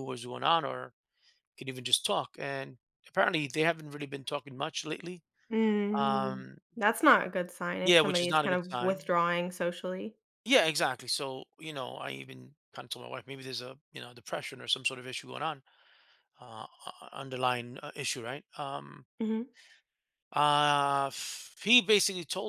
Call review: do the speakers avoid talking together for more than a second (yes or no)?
no